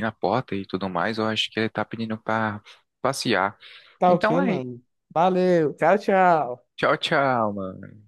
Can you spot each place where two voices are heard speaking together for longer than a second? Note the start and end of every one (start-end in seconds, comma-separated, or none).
none